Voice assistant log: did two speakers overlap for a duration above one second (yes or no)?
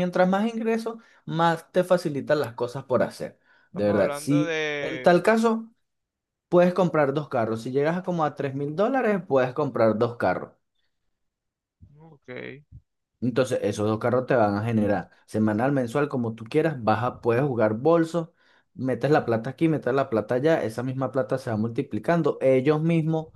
yes